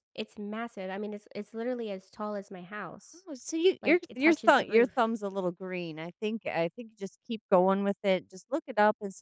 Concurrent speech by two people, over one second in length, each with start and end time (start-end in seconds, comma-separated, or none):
3.8-5.1